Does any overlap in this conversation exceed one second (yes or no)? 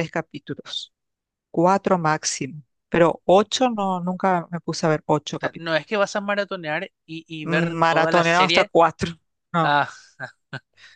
yes